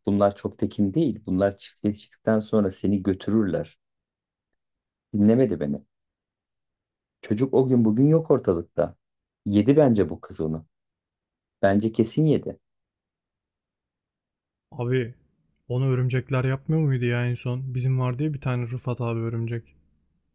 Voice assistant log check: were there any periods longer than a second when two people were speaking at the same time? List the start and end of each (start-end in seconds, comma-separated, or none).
none